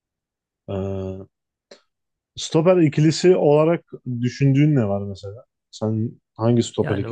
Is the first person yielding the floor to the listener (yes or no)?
yes